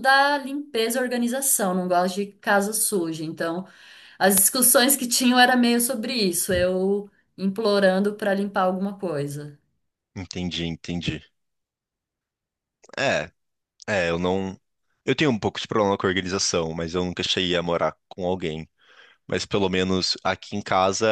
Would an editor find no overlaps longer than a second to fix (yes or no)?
yes